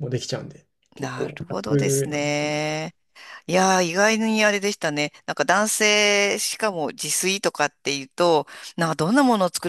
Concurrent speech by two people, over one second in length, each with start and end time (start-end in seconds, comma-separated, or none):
1.0-2.5